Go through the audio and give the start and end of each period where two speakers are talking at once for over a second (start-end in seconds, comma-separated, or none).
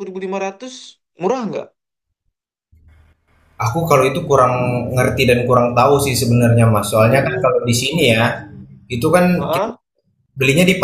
7.0-8.6